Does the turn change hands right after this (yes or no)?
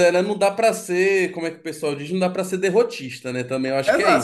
yes